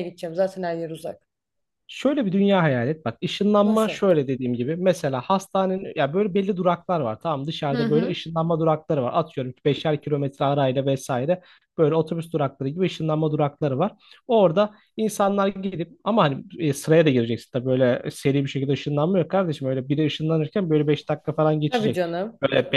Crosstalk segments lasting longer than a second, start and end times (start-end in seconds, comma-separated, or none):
none